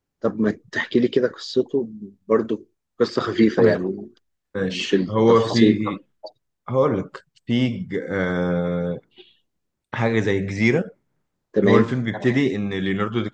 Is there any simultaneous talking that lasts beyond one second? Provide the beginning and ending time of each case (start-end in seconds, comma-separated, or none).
4.6-5.8